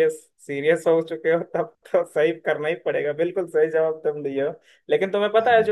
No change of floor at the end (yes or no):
yes